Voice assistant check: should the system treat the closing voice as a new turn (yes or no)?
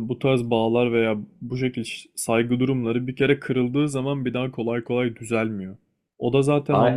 no